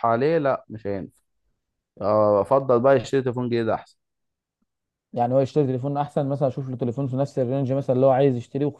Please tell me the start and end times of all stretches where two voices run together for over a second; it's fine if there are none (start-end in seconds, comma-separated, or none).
none